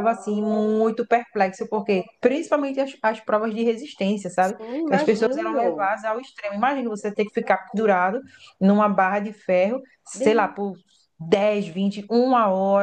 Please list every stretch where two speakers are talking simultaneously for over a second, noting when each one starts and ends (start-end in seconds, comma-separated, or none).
4.4-5.9